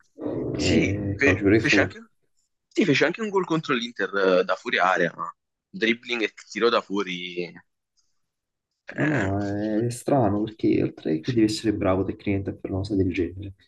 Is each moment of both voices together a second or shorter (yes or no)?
no